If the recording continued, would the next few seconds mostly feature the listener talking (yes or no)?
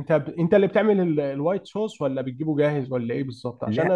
no